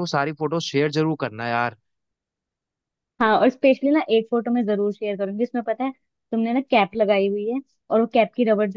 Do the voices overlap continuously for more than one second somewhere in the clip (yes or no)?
no